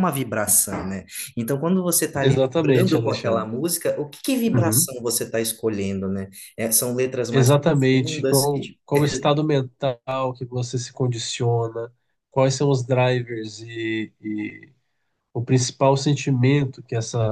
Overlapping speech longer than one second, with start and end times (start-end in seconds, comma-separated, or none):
2.2-3.5, 7.3-8.8